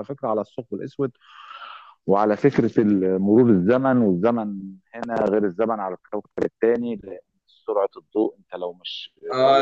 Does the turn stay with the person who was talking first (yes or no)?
no